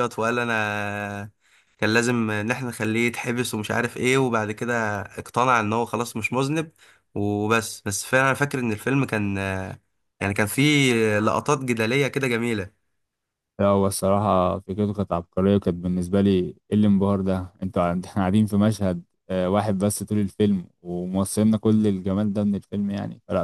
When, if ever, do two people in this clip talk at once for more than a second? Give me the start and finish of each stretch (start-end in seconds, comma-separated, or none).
none